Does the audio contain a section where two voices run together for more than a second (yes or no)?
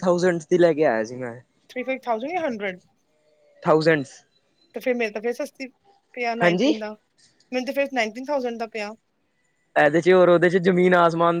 no